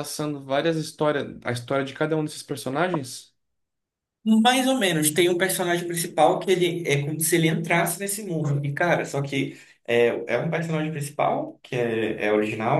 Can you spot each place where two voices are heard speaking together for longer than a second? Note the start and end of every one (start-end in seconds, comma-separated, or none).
none